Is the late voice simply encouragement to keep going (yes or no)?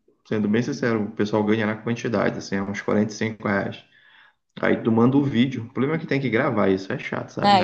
no